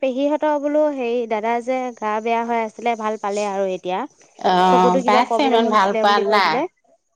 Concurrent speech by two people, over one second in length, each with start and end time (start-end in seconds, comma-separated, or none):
4.7-6.6